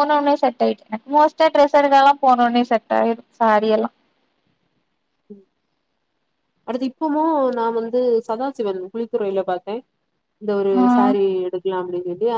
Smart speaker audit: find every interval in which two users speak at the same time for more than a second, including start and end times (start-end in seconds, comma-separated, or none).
none